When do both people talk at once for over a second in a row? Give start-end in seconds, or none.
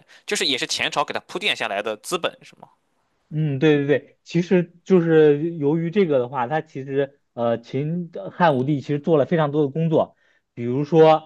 none